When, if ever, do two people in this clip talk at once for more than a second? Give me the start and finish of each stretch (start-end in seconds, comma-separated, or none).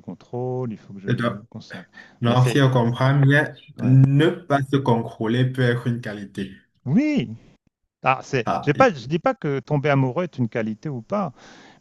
none